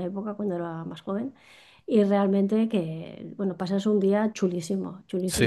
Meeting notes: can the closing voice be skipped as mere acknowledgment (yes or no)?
no